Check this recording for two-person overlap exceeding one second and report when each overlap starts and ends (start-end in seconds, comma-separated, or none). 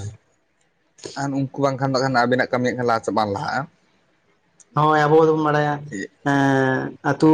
none